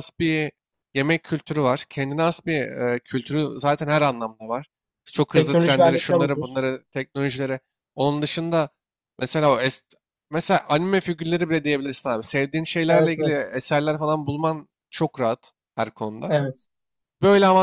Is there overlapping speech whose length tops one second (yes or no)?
yes